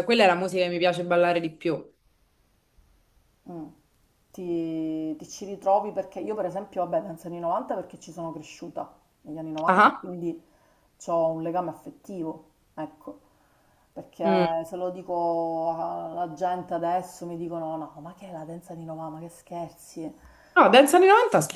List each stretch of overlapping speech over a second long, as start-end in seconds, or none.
none